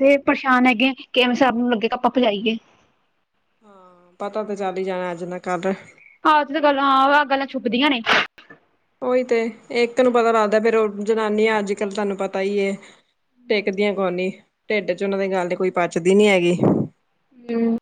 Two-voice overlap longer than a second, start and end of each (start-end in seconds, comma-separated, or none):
none